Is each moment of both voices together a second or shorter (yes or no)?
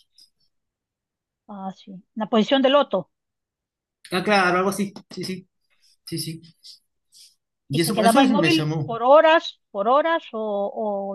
no